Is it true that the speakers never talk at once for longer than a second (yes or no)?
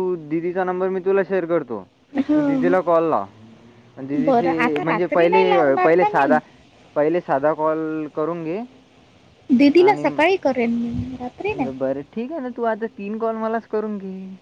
no